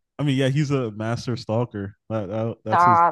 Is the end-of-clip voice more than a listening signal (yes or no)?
yes